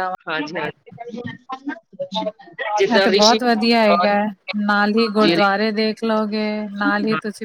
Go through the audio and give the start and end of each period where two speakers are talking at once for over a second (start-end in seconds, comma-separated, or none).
none